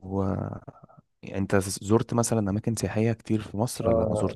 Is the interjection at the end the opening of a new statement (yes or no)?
yes